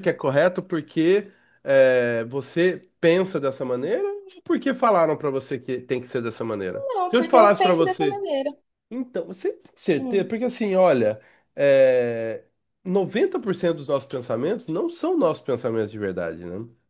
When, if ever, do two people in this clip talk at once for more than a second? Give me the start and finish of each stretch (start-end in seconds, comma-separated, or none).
6.7-8.2